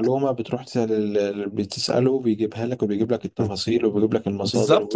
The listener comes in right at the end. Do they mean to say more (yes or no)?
yes